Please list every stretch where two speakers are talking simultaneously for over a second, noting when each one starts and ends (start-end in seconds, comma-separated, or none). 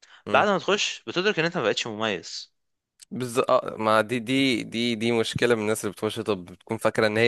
none